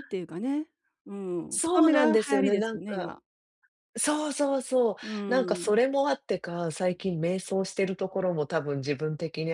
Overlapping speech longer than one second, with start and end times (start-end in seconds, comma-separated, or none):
1.5-3.1